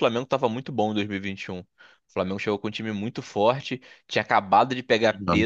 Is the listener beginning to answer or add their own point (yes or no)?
no